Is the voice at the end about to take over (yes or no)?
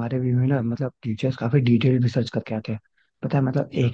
no